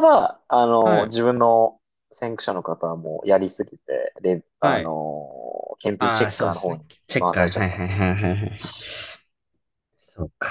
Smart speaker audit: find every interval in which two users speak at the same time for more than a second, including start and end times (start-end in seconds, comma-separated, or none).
6.0-7.8